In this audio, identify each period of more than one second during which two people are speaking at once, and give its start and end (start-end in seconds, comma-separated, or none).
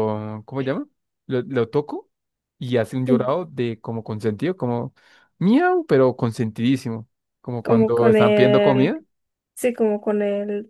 7.6-8.9